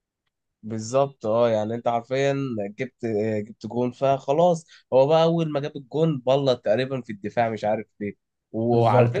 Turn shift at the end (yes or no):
no